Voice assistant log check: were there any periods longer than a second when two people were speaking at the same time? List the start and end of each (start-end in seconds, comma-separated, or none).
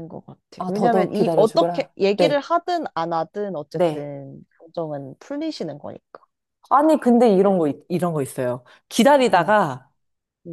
0.6-2.4